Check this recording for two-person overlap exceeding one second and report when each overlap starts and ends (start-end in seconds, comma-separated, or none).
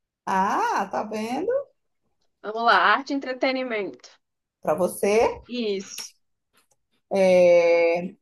none